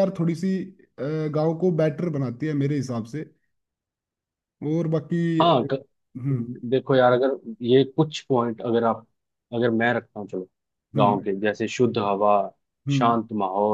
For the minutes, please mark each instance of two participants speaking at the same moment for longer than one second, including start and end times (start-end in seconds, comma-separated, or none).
none